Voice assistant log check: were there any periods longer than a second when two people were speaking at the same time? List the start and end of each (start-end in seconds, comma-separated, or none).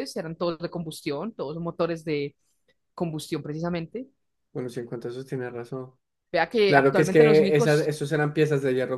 6.7-7.9